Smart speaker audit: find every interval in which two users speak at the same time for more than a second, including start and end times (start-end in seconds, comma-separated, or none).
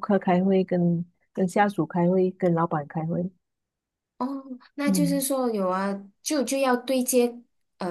none